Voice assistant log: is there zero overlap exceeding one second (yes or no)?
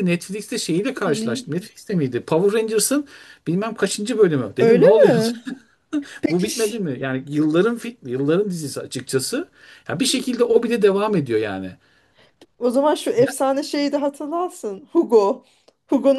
yes